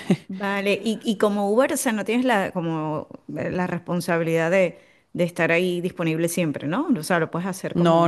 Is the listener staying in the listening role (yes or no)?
no